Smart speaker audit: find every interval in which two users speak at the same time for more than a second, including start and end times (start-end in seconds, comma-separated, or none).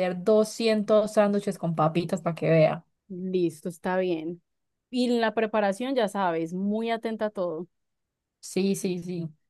none